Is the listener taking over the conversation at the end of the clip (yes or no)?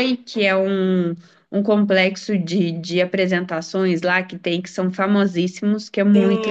yes